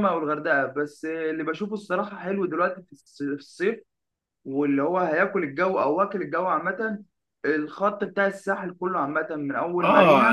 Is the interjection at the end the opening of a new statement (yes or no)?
yes